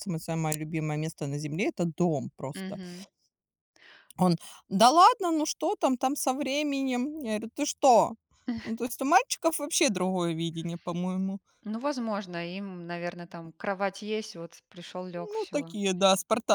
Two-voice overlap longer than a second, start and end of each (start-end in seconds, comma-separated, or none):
none